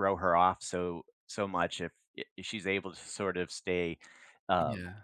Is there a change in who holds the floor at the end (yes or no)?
no